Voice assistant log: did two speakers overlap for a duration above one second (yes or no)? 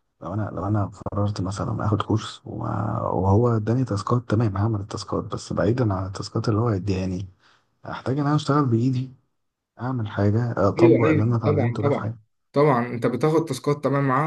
yes